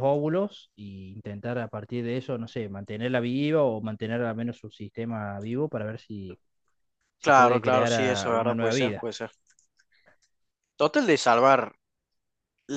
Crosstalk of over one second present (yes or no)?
yes